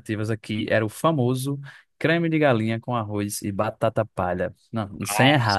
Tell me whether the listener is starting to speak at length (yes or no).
no